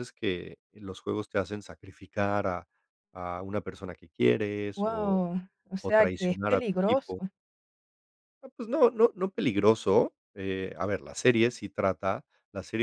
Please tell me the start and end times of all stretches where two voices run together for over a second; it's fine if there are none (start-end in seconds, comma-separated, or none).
5.8-7.2